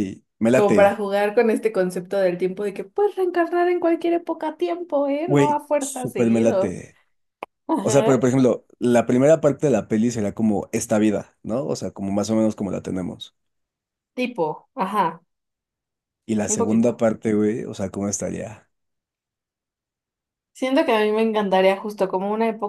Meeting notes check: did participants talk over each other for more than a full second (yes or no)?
yes